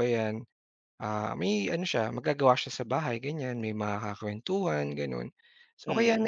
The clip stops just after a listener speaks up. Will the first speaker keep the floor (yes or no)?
yes